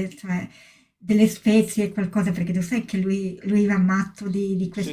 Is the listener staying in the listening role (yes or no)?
no